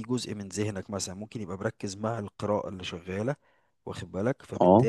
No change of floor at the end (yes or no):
yes